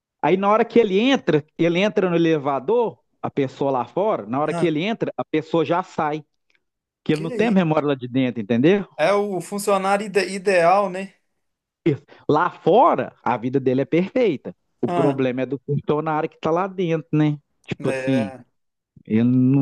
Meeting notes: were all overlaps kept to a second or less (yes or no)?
yes